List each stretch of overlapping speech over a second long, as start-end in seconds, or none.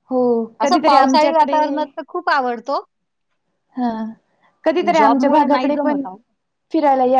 0.6-1.9, 4.8-6.0